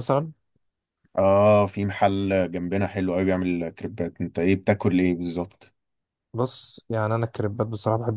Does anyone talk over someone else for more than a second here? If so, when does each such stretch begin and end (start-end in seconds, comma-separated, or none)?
none